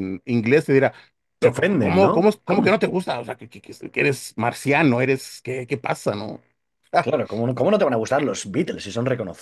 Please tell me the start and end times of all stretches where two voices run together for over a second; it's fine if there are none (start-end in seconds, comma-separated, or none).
1.4-2.8